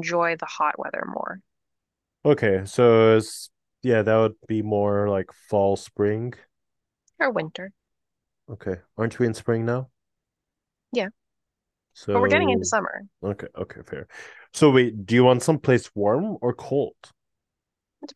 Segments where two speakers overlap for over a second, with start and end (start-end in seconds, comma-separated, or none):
none